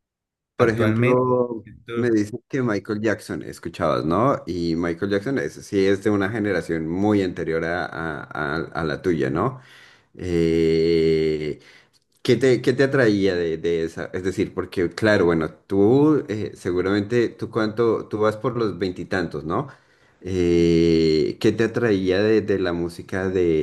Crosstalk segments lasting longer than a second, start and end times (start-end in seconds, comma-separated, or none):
0.6-2.1